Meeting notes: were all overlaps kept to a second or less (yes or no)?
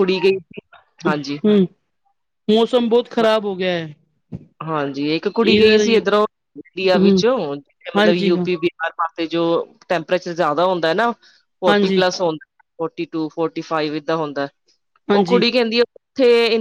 yes